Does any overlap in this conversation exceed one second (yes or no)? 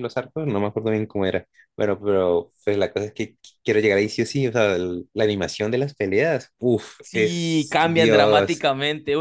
yes